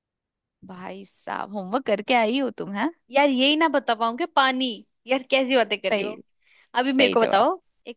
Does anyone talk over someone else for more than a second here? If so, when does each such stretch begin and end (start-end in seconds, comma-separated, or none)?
none